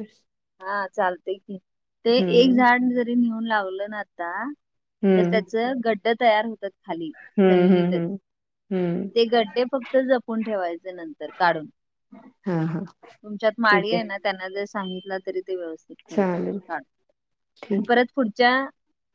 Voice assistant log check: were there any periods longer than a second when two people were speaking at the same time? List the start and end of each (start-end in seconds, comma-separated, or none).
none